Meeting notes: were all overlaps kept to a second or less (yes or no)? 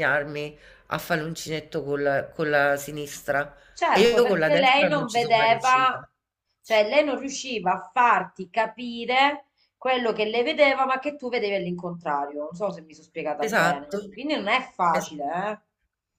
no